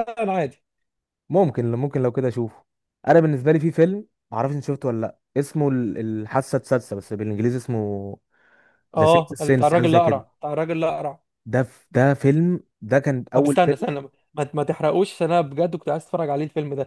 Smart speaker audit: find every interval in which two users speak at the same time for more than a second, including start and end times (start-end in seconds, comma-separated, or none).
9.0-10.2